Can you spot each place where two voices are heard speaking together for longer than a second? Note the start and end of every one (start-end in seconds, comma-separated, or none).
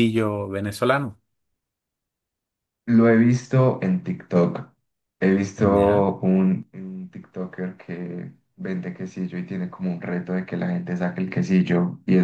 none